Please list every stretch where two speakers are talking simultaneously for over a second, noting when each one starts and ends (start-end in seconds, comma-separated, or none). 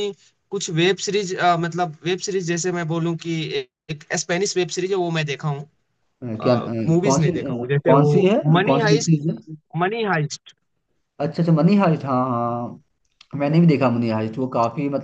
6.2-9.2